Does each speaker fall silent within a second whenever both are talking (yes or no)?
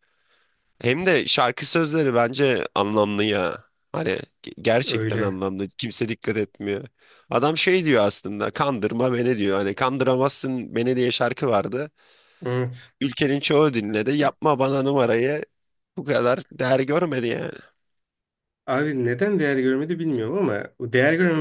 yes